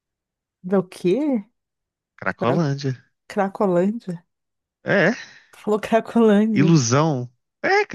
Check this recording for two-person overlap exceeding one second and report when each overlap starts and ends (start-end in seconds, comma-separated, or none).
none